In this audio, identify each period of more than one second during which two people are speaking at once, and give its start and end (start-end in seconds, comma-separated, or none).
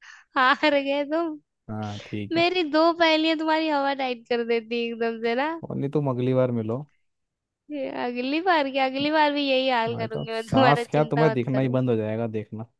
9.9-11.8